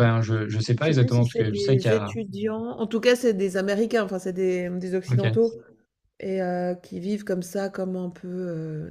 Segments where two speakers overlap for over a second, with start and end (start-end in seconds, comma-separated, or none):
0.8-2.1